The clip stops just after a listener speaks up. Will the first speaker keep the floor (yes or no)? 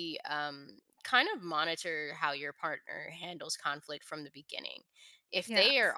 yes